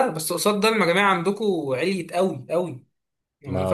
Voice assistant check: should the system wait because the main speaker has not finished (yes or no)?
yes